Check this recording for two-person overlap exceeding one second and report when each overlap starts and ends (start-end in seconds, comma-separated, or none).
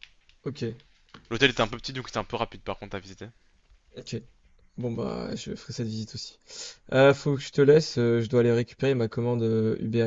none